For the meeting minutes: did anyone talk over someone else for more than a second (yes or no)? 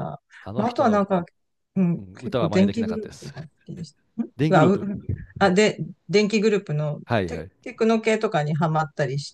yes